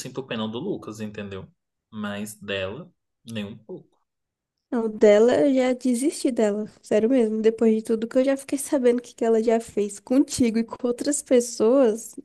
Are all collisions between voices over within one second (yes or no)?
yes